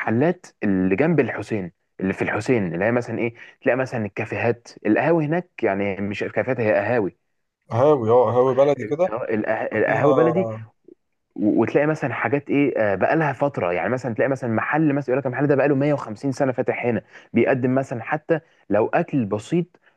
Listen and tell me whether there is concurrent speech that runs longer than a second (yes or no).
no